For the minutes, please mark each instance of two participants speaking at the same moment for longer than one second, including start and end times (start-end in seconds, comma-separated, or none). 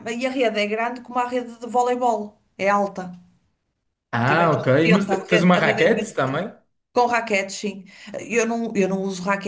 4.2-6.5